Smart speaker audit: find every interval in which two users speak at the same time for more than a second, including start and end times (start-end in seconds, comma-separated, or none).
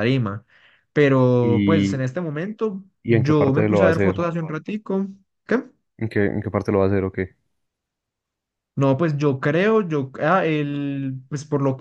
3.0-4.2